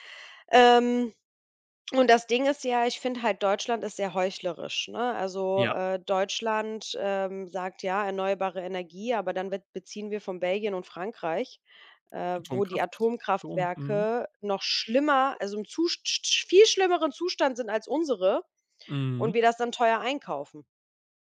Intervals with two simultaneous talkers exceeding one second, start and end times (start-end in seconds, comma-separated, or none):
12.4-14.1